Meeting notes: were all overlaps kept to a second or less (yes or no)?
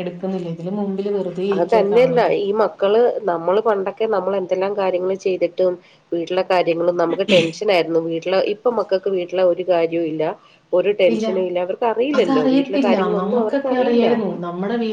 no